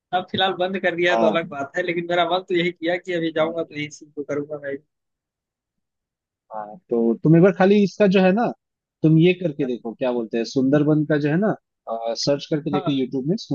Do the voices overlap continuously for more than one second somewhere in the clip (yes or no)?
no